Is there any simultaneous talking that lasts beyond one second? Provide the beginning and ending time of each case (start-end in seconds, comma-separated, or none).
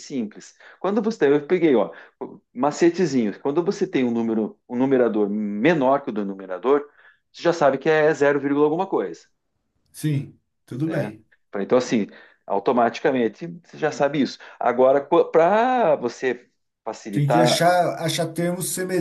none